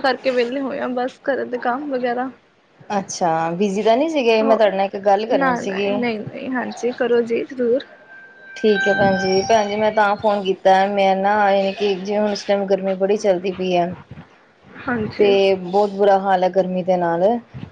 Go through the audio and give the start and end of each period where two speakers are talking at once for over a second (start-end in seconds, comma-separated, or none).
none